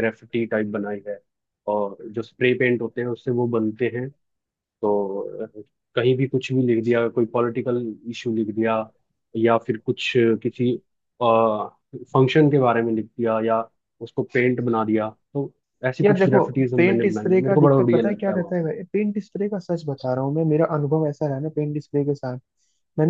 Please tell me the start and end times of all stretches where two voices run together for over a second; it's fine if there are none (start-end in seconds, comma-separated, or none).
16.0-18.4